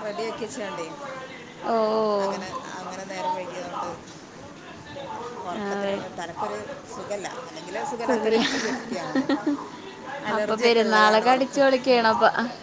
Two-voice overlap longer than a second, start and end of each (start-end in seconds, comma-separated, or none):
10.3-12.0